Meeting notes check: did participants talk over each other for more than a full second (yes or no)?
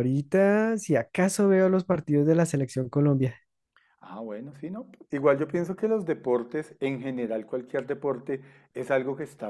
no